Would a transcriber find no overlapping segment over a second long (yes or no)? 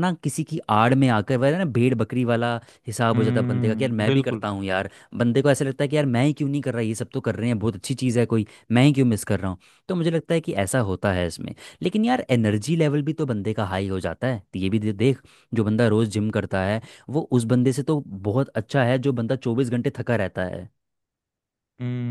no